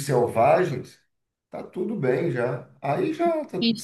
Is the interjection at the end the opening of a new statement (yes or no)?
yes